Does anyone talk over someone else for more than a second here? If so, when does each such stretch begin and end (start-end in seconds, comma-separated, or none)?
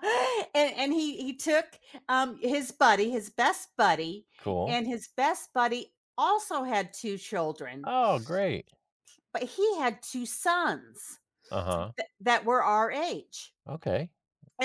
none